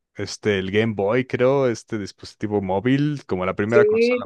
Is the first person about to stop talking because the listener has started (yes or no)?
no